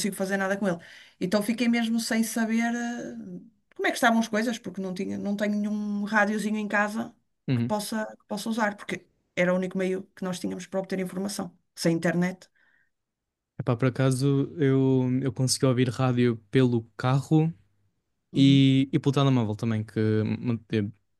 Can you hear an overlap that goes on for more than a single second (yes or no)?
no